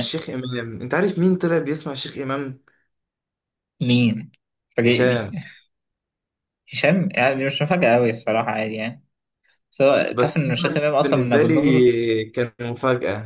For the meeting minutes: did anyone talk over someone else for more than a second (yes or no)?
yes